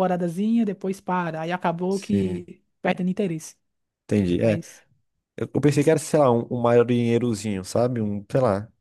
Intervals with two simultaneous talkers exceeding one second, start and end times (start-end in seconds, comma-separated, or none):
none